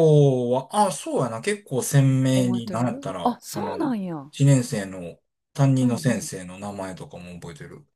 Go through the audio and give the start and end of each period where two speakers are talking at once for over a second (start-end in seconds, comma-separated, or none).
2.3-4.3